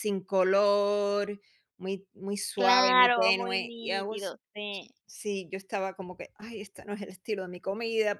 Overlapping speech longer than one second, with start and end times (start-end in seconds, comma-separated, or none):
2.6-4.3